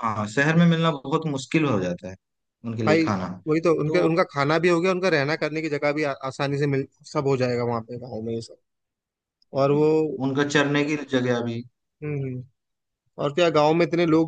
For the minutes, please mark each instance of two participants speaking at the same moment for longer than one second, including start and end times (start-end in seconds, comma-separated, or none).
none